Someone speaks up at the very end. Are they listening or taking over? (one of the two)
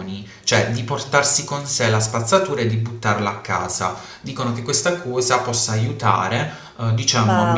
listening